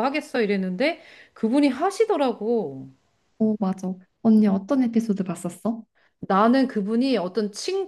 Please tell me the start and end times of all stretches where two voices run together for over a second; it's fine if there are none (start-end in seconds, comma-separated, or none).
none